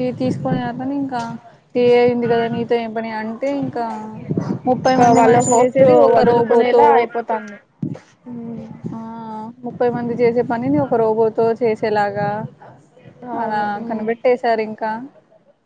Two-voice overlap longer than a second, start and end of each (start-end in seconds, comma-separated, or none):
4.9-6.8